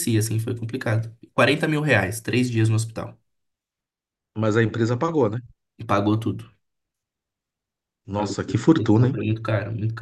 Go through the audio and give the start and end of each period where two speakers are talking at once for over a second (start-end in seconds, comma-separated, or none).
none